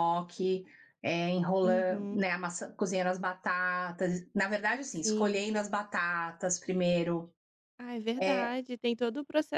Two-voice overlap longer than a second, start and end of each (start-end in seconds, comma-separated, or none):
none